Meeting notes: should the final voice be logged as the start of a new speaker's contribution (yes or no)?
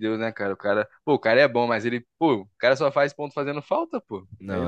yes